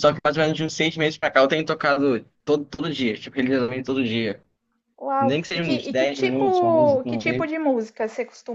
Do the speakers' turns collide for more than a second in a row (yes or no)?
yes